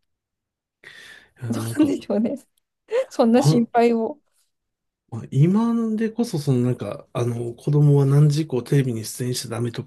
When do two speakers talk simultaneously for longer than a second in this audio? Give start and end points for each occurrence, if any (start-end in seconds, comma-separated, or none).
none